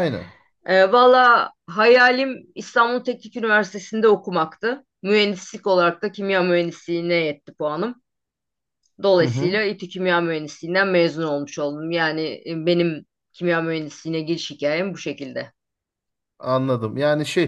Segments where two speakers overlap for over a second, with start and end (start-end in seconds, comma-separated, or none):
none